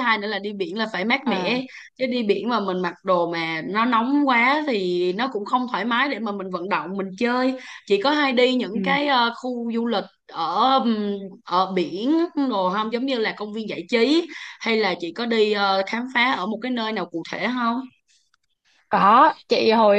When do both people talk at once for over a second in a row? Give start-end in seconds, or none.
none